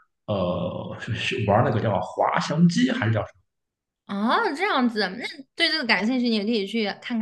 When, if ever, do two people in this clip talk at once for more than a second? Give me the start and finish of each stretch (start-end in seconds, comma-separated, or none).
none